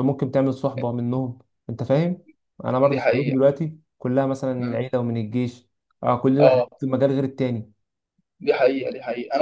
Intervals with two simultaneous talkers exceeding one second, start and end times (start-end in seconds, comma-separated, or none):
none